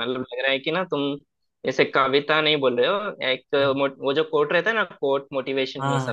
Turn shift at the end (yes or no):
yes